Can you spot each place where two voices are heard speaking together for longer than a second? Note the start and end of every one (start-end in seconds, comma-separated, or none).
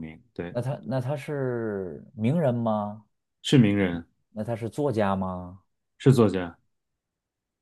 none